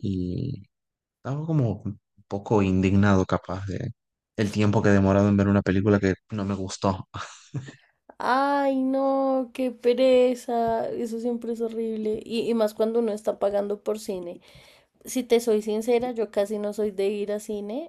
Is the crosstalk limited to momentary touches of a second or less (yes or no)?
yes